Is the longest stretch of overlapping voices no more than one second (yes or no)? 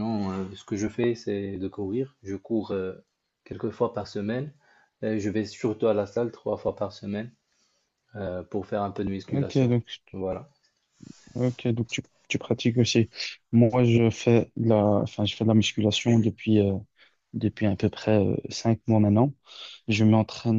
yes